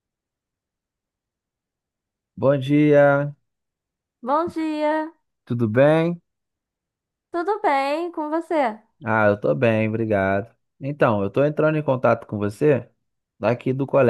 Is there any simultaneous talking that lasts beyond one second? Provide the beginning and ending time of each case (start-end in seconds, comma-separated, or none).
none